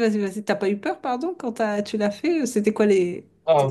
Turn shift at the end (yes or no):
yes